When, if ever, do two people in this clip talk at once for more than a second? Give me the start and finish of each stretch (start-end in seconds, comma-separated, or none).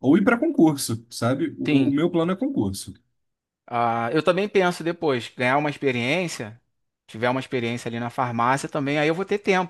none